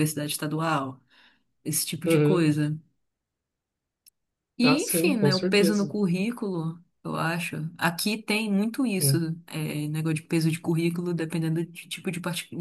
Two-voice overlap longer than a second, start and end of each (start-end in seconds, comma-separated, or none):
4.6-5.9